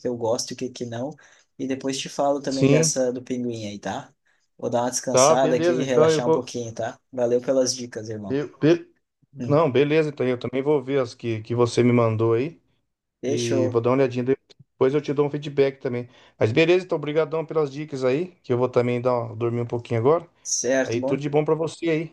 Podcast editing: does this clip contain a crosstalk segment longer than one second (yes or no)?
yes